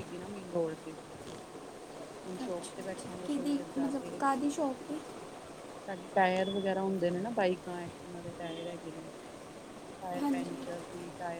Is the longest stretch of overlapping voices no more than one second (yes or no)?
no